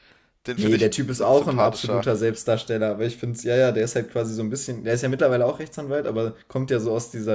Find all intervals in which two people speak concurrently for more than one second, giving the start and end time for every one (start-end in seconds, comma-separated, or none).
0.6-2.1